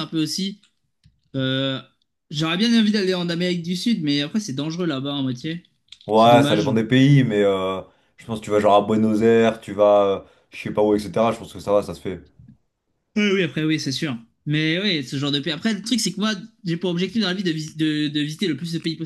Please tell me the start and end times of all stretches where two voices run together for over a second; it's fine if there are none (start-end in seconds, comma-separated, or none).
none